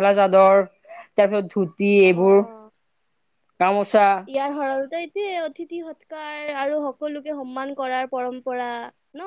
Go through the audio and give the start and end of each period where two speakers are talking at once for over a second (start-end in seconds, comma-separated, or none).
none